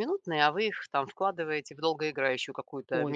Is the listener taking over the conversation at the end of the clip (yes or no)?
yes